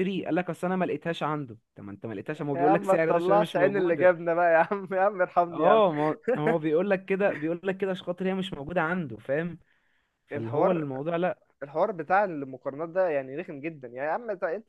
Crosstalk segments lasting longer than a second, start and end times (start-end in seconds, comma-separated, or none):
2.5-4.1